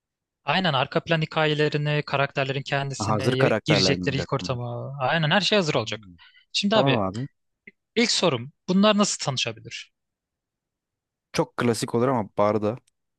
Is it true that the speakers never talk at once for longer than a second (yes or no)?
no